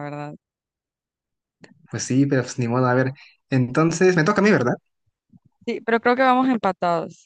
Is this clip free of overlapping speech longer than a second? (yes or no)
yes